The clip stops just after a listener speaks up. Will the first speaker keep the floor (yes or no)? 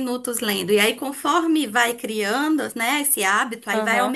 yes